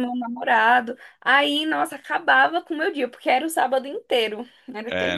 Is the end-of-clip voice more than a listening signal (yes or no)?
yes